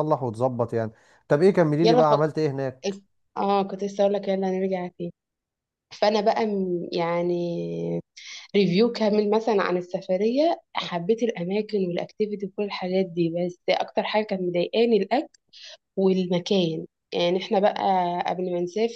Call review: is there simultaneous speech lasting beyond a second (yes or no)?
no